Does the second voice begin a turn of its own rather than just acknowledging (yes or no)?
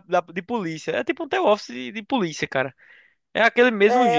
yes